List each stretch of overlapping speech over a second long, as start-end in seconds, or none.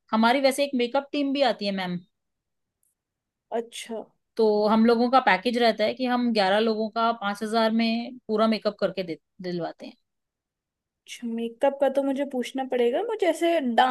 none